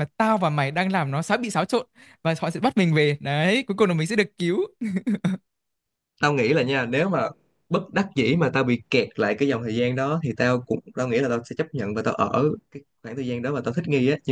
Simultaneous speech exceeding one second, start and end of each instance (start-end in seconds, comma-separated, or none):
none